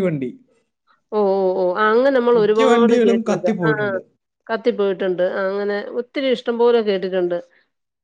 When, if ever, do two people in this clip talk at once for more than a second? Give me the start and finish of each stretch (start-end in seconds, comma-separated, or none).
2.4-3.9